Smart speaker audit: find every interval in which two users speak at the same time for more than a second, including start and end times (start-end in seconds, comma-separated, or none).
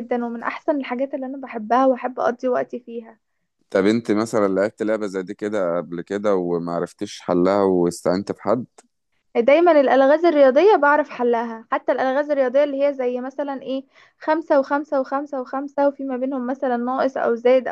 none